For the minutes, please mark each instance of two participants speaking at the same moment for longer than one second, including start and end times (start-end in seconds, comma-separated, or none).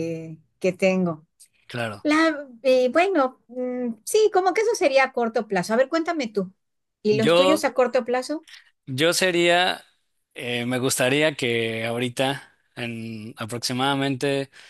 none